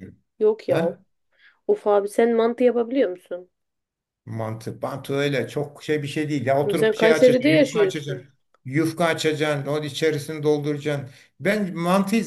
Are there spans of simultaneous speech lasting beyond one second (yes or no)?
yes